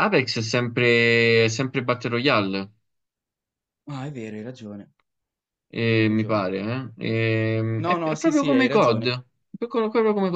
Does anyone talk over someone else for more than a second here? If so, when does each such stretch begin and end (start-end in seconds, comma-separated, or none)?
7.8-9.1